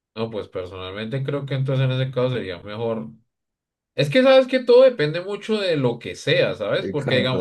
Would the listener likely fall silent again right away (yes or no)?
yes